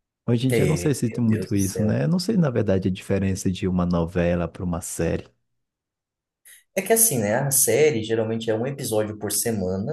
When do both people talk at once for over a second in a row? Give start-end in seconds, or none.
0.5-2.0